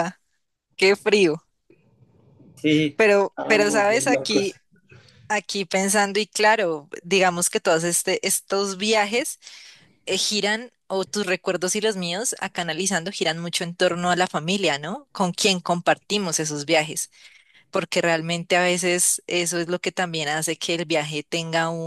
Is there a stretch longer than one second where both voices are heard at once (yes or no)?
yes